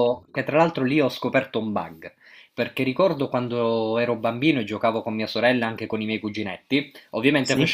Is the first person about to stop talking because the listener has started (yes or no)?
no